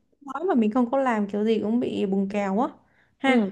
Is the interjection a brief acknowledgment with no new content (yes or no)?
no